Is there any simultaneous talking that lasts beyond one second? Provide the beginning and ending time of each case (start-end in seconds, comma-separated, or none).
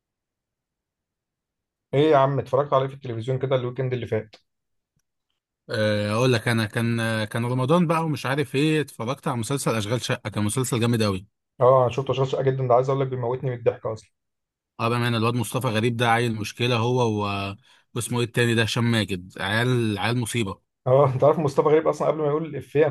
none